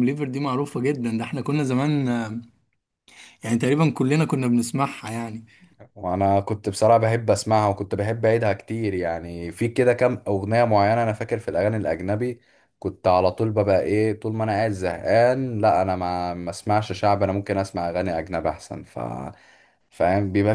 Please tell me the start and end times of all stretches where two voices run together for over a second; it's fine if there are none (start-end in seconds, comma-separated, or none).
none